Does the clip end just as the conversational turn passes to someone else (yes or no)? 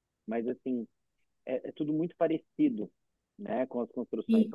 no